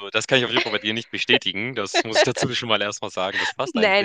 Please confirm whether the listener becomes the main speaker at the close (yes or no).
yes